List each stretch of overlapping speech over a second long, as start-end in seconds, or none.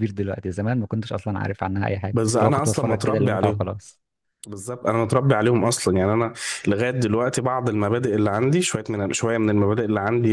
2.1-3.7